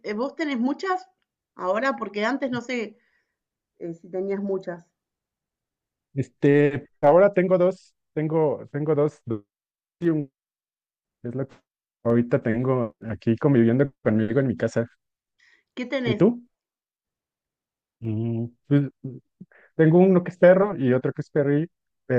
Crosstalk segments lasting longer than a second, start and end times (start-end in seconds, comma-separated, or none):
none